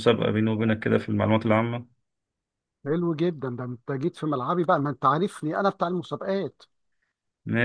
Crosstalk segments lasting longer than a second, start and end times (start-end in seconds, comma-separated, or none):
none